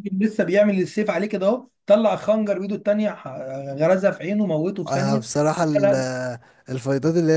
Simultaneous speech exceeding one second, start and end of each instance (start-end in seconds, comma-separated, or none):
none